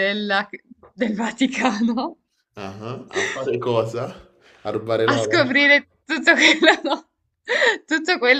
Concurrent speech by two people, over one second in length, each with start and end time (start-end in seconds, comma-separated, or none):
none